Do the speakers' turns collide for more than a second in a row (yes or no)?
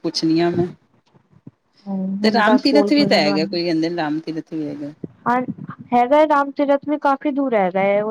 yes